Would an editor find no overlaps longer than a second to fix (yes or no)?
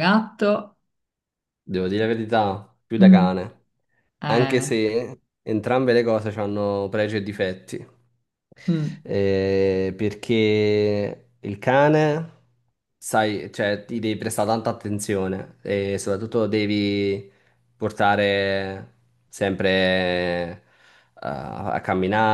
yes